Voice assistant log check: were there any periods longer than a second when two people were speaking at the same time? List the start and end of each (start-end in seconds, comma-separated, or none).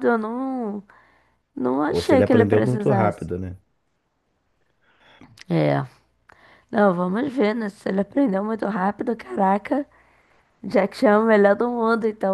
1.9-3.3